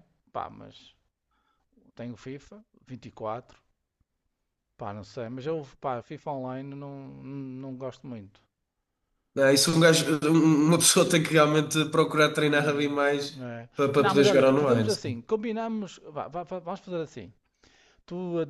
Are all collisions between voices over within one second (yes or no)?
no